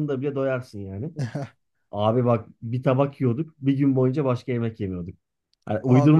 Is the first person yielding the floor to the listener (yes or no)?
no